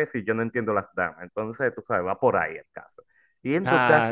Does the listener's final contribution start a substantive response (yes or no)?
no